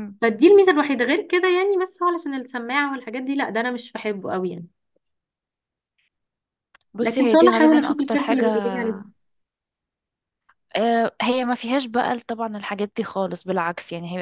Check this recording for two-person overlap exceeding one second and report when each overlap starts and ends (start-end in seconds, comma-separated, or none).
7.0-8.5